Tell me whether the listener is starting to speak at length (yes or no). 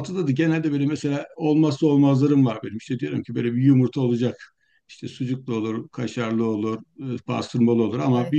no